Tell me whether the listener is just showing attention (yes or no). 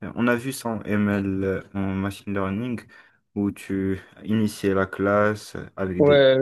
no